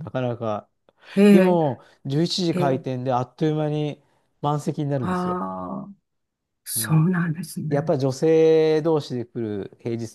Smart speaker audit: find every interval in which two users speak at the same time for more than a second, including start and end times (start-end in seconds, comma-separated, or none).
none